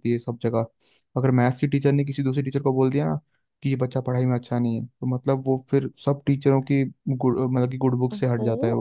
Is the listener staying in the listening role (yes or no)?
no